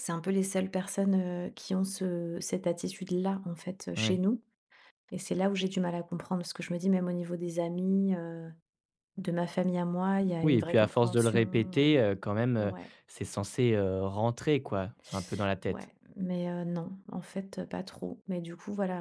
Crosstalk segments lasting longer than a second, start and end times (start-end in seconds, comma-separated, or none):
10.4-12.0